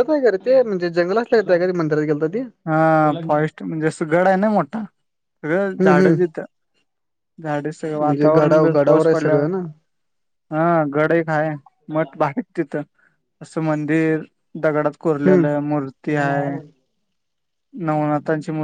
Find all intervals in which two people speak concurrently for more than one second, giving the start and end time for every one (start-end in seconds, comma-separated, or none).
8.0-9.4